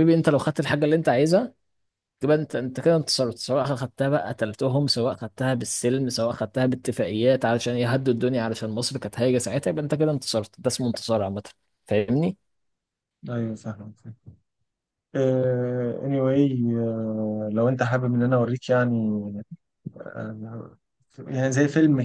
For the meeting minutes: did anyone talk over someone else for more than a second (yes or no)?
no